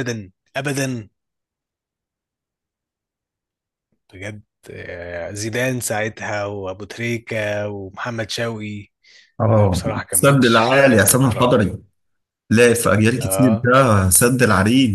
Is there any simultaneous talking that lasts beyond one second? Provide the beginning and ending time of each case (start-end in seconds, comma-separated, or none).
9.5-11.8